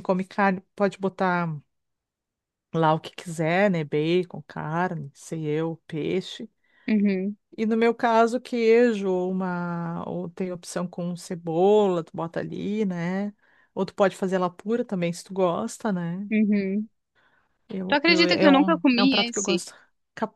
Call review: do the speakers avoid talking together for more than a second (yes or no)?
no